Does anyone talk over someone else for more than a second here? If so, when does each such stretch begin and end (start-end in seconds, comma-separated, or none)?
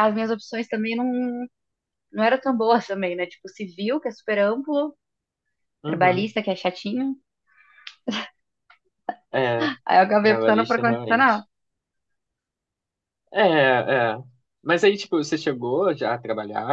10.2-11.4